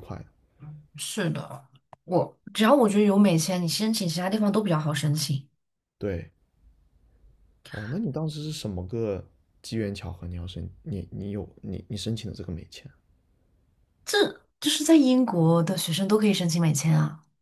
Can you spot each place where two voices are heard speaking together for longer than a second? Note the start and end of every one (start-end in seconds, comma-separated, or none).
none